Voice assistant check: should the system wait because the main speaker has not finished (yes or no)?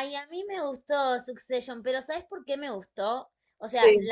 yes